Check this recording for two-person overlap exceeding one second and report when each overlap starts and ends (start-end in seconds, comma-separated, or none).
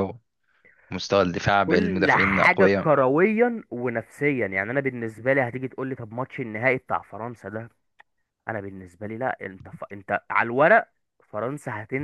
1.7-2.9